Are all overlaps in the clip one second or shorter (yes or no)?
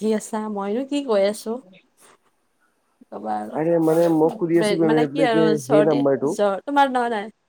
no